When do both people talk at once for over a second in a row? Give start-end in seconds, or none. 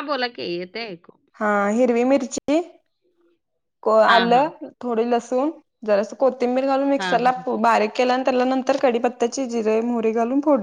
none